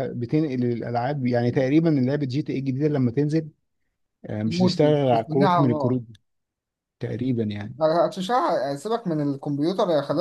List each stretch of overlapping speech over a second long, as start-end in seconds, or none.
4.5-6.0